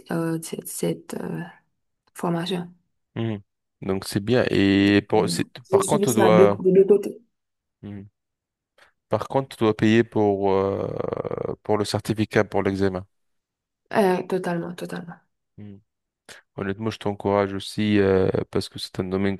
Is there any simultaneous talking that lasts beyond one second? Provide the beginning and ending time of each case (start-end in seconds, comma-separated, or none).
4.9-6.6